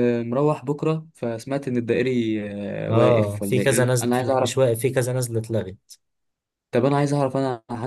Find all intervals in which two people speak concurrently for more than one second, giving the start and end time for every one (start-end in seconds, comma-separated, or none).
2.9-4.5